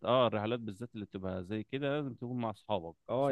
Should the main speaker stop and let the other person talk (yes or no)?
yes